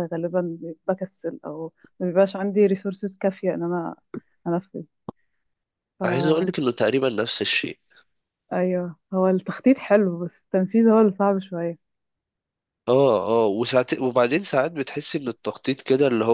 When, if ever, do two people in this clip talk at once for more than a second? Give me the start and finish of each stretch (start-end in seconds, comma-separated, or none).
none